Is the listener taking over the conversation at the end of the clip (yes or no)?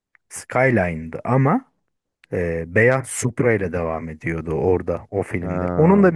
no